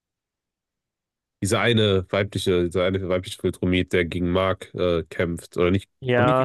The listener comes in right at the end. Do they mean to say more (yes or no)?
yes